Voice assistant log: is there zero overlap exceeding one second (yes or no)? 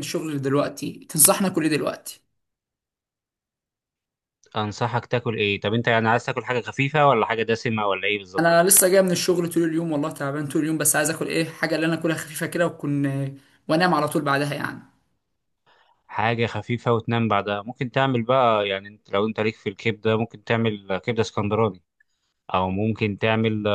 yes